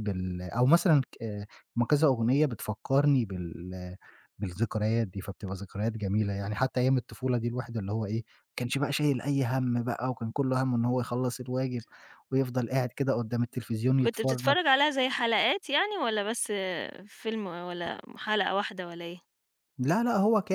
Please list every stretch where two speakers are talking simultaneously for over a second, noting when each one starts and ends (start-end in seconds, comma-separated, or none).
none